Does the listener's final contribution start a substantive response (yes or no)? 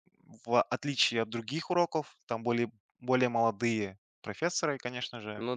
no